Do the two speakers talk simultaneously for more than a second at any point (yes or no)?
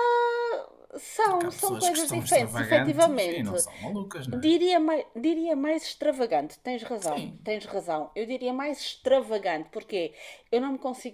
yes